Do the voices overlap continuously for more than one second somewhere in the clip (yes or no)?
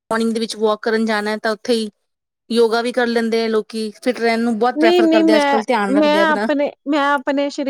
yes